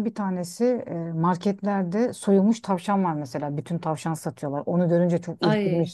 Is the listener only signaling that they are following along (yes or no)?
yes